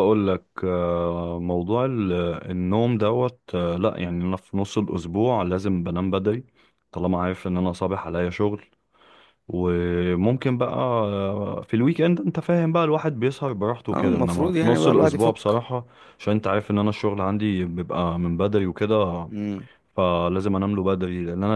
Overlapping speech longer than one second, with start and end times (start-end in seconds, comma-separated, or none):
13.9-15.6